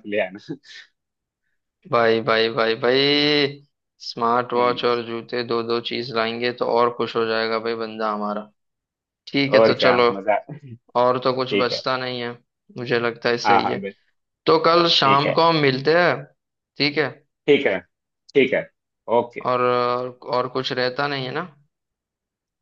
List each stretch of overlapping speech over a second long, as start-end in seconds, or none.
none